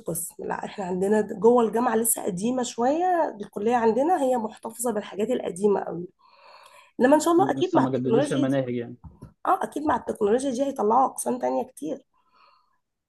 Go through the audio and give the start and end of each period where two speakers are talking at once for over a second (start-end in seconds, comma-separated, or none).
7.4-8.6